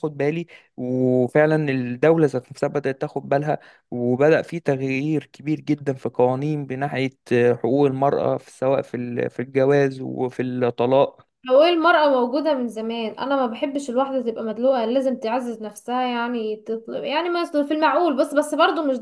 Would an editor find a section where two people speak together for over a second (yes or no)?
no